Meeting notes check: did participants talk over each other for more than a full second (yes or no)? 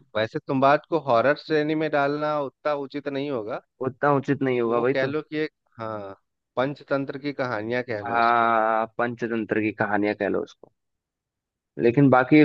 no